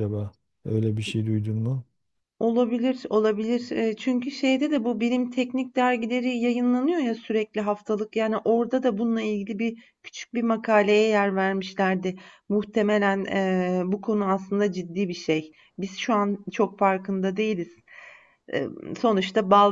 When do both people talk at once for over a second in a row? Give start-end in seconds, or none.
none